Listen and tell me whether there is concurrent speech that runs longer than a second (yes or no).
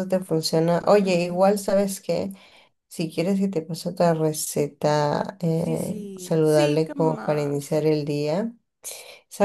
yes